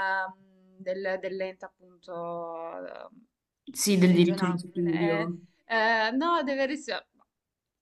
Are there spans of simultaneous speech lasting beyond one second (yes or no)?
yes